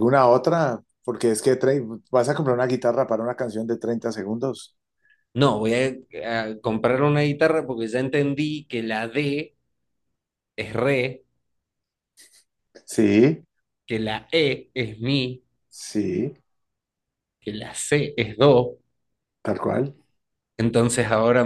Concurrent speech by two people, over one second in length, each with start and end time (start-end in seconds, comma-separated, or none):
none